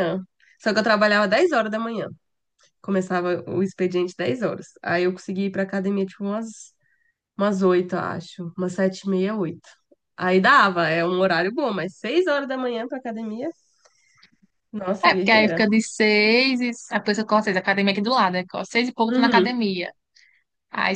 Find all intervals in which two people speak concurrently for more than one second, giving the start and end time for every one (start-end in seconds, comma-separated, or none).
none